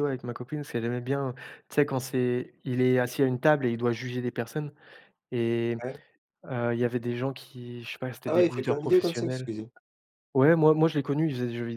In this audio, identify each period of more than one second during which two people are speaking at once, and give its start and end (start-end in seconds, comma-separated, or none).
8.2-9.5